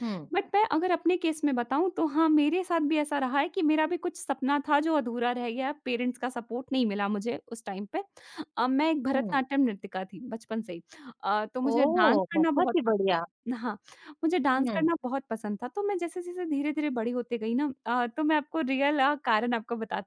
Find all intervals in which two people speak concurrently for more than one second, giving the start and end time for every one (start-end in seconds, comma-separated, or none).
11.7-13.1